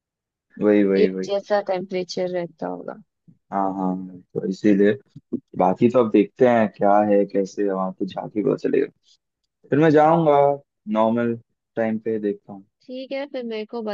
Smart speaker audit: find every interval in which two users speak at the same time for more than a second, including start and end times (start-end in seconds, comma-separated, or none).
none